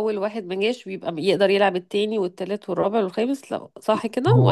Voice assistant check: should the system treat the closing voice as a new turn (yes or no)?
yes